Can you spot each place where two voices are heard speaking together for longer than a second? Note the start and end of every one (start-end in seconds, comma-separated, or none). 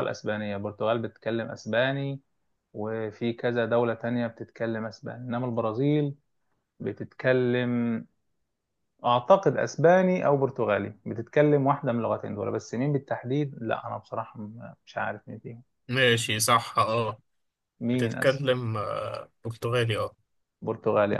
none